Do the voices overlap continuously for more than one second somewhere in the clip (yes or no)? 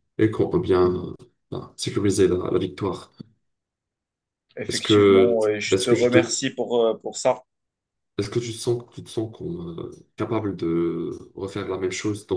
yes